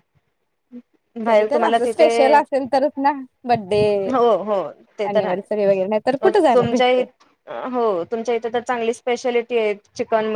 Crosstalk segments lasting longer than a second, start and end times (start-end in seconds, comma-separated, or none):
5.1-7.0